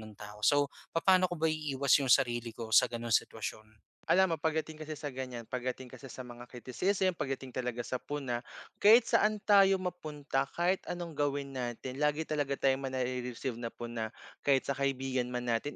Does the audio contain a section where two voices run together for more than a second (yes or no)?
no